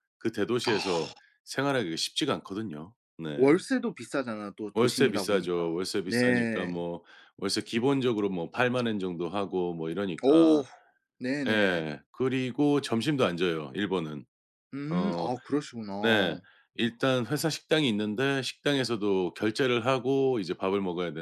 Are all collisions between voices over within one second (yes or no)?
no